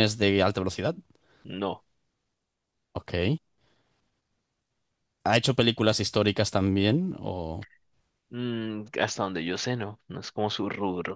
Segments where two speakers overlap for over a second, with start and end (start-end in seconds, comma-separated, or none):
none